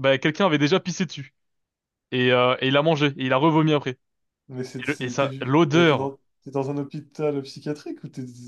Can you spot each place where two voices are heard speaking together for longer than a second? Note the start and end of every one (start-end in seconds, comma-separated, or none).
4.8-6.2